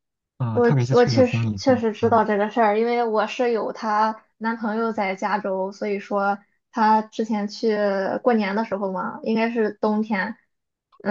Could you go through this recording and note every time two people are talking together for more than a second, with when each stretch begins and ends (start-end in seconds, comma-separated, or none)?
0.5-2.2